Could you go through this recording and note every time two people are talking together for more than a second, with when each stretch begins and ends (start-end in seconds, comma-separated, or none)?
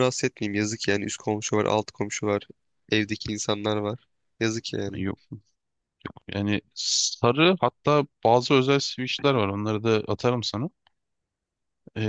none